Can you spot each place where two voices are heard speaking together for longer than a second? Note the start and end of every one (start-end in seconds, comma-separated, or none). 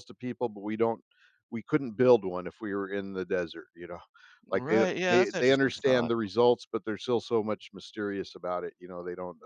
4.5-6.1